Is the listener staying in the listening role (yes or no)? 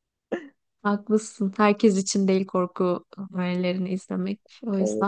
no